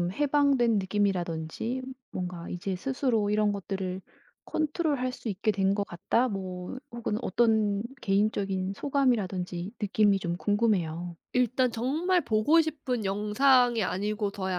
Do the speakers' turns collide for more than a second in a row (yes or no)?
no